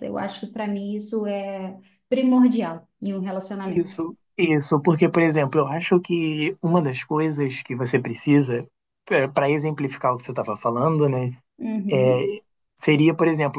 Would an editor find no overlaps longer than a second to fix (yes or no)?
yes